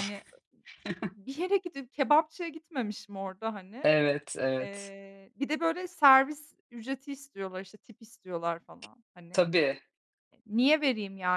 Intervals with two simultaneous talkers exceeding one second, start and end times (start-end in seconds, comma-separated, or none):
none